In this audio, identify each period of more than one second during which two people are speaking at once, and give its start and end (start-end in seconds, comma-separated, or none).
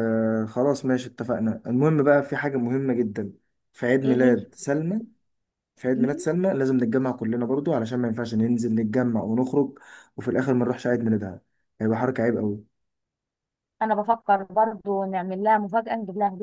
none